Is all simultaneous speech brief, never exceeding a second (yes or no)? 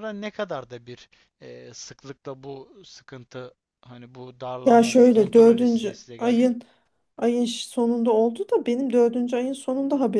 no